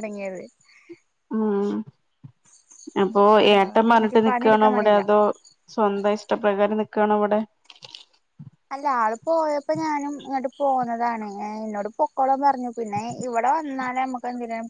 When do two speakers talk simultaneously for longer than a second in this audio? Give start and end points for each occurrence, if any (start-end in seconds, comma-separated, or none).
3.5-4.9